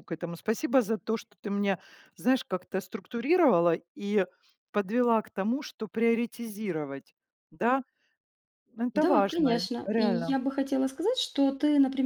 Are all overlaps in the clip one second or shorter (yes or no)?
no